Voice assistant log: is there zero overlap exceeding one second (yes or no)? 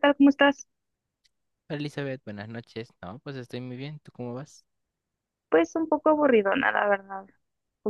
yes